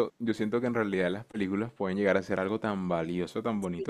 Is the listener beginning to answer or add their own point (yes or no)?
no